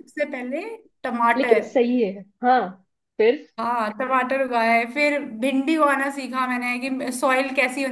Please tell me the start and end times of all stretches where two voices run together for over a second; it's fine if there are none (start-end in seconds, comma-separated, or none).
none